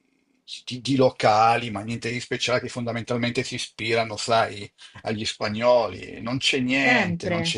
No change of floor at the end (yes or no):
no